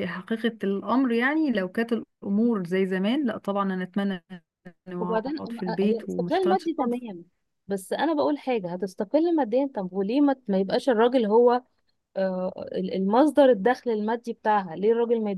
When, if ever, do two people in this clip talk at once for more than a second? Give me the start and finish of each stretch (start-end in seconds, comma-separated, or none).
5.0-7.0